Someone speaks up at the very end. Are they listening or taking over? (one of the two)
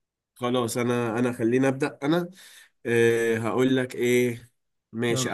listening